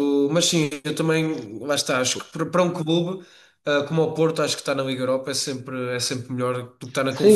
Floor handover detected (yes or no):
yes